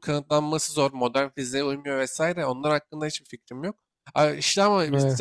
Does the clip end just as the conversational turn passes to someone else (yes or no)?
no